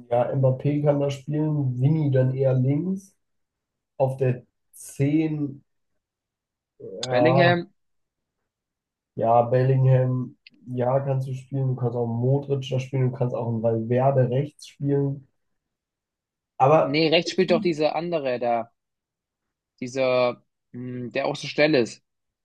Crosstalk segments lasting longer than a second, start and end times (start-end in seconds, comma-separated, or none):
none